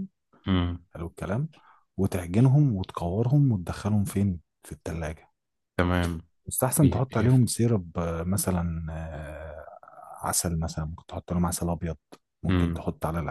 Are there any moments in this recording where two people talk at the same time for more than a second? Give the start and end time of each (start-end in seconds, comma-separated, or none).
none